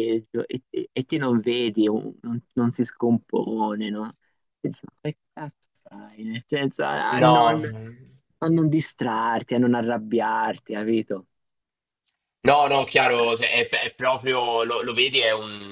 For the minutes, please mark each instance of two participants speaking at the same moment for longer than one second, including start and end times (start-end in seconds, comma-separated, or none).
none